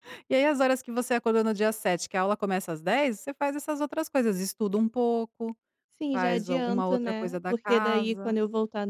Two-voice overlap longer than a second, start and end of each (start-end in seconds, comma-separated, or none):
6.1-8.4